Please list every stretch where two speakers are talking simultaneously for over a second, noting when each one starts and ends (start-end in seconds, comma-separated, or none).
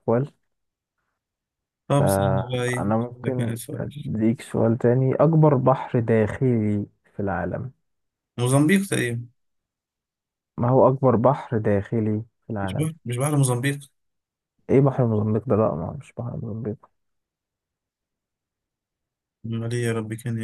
2.0-3.9